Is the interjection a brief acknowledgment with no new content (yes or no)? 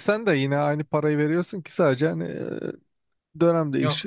no